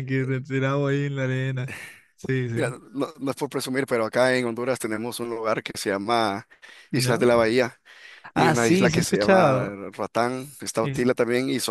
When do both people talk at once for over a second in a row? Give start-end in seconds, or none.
8.3-9.8